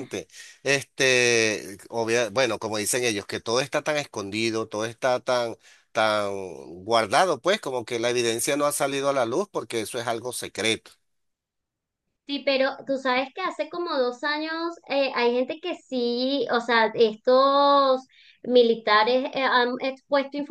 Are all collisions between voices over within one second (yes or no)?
yes